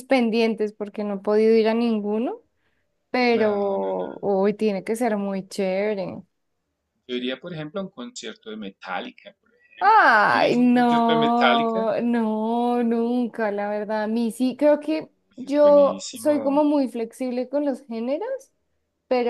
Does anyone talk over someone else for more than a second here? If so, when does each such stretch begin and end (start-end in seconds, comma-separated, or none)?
9.8-11.9, 15.2-16.7